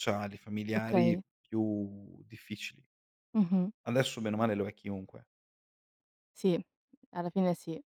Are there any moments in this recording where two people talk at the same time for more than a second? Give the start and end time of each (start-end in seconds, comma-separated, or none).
none